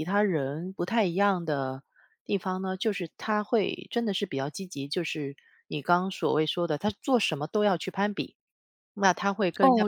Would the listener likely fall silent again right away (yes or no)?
no